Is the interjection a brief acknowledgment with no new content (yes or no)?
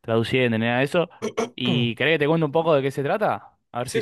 no